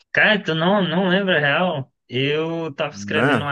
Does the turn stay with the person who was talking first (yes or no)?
yes